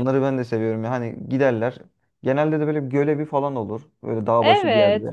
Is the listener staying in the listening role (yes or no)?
no